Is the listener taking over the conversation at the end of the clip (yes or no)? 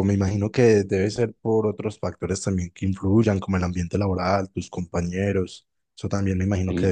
no